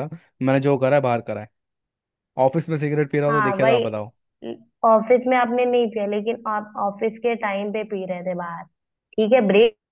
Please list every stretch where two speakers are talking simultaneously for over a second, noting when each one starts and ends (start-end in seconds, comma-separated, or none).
none